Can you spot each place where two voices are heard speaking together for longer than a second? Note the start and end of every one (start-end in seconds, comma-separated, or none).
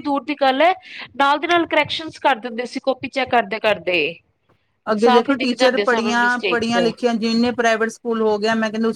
5.0-6.8